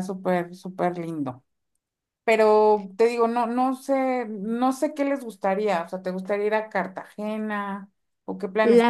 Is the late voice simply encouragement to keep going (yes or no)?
no